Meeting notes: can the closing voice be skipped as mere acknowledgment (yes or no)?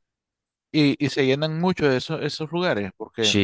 no